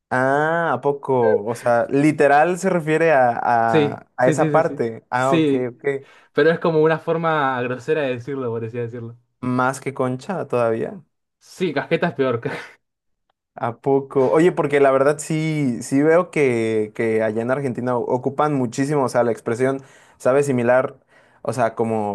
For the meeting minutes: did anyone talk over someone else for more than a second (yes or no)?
yes